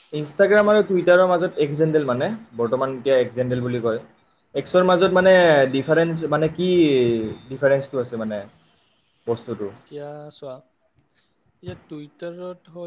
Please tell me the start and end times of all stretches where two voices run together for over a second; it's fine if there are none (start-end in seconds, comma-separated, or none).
none